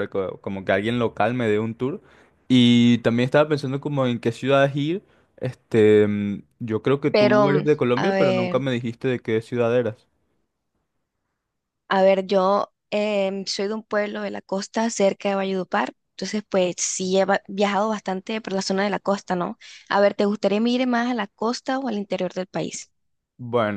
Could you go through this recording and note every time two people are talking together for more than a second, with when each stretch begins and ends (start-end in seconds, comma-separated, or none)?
7.1-8.6